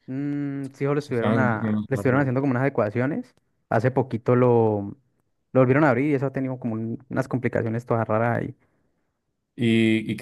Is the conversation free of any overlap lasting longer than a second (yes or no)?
no